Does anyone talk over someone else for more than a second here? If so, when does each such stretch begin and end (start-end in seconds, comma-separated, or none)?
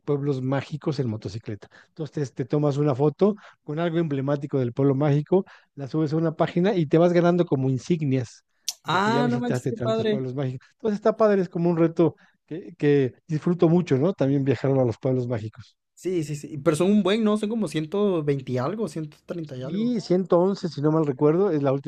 8.9-10.2